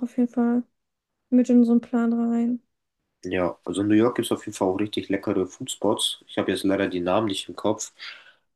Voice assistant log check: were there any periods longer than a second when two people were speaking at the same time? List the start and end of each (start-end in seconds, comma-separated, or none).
none